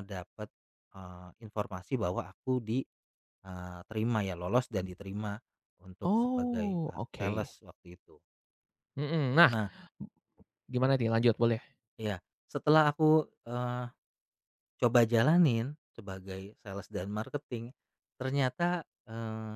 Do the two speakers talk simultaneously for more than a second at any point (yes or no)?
yes